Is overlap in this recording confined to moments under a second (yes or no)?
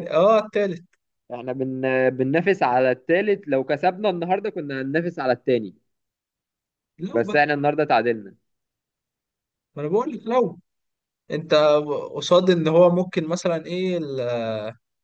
yes